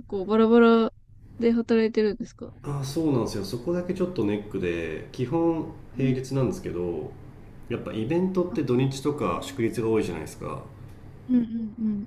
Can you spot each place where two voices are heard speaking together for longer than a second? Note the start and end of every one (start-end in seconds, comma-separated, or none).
none